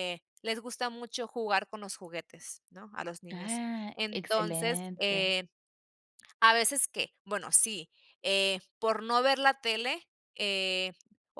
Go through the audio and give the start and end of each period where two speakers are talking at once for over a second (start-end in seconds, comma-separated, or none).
3.3-5.4